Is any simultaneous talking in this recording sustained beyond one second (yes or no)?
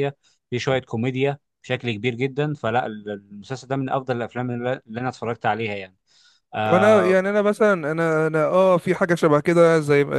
no